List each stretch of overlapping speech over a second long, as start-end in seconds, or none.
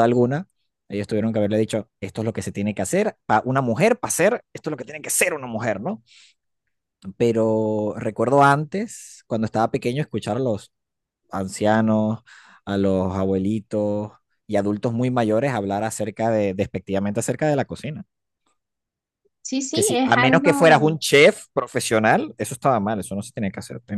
19.7-21.0